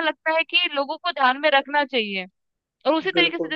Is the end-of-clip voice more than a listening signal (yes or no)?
no